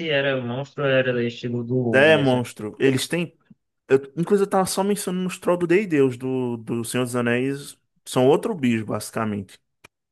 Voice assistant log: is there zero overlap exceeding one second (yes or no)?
yes